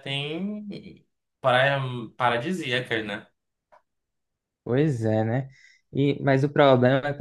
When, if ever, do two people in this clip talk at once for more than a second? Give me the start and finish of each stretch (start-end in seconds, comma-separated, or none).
none